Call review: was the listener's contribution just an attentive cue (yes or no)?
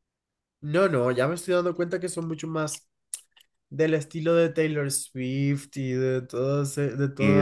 no